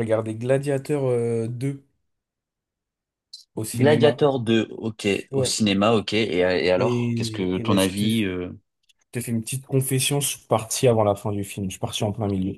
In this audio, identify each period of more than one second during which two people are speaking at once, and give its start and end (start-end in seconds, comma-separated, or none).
6.8-8.2